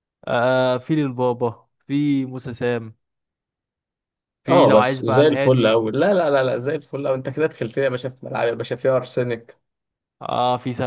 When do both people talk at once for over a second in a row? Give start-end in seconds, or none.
4.5-5.8